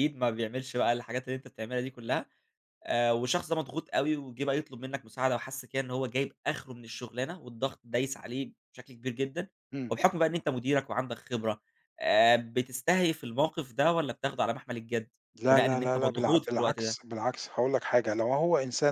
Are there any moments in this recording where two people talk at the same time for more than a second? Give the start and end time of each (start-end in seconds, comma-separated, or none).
15.5-17.0